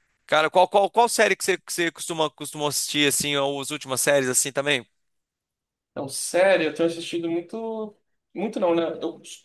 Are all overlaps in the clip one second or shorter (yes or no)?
yes